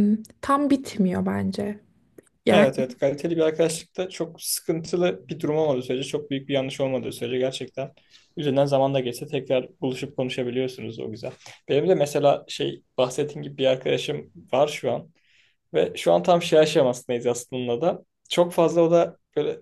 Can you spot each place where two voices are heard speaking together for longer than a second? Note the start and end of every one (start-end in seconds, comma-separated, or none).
none